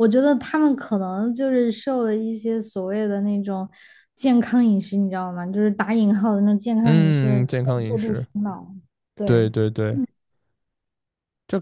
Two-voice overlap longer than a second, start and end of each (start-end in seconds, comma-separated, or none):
6.8-8.3